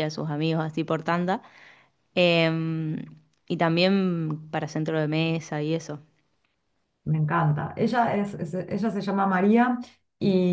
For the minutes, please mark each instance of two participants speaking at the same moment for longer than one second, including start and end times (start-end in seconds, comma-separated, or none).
none